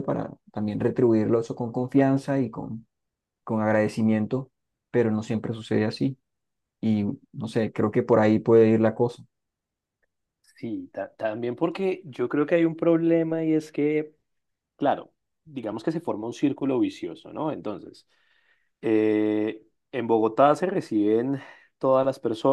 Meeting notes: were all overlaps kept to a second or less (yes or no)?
yes